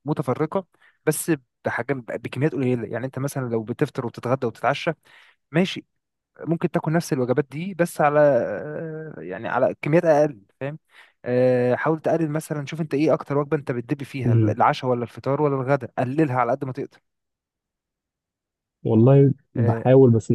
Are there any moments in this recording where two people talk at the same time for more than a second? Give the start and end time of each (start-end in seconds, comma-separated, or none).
none